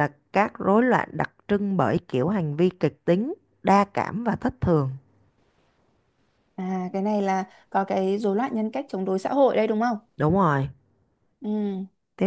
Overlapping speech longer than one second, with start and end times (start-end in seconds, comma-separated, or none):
none